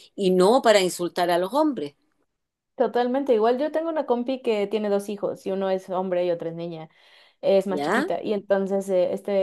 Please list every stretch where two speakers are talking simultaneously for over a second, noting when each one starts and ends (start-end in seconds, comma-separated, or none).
none